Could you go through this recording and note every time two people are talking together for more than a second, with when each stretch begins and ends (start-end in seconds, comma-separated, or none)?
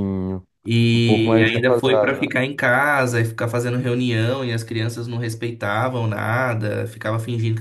0.9-2.4